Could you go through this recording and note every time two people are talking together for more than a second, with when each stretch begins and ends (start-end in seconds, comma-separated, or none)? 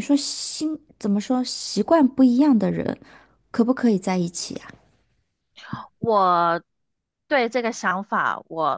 none